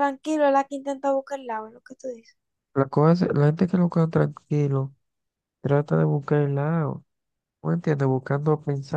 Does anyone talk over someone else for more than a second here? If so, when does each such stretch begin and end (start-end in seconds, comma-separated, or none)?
none